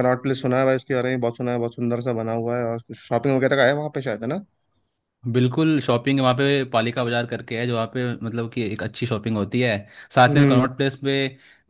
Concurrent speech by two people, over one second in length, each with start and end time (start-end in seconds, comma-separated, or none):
none